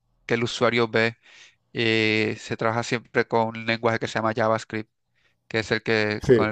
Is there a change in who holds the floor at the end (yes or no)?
no